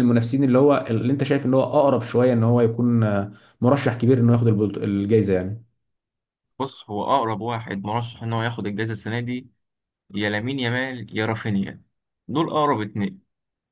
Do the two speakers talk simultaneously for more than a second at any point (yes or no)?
no